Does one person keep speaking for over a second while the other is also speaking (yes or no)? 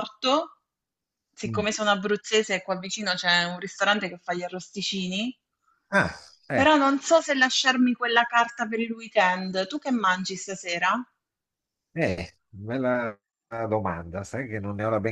no